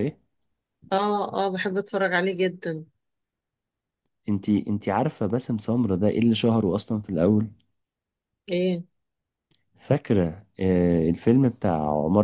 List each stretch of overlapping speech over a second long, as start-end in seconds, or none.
none